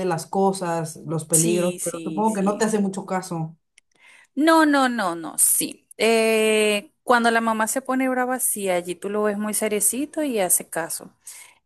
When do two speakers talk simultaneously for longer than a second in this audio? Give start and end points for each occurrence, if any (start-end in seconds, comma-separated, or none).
1.3-2.8